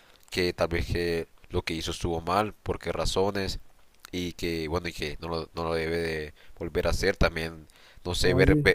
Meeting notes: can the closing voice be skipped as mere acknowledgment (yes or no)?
yes